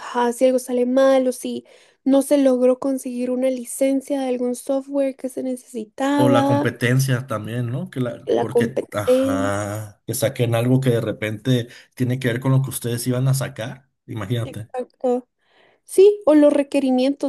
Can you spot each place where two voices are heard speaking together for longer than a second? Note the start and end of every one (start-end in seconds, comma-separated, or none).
8.2-9.5